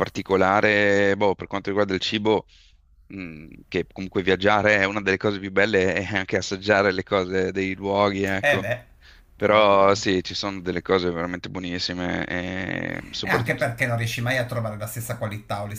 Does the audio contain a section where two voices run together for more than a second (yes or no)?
no